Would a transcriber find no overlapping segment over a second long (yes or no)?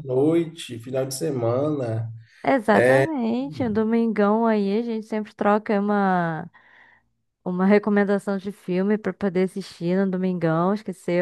yes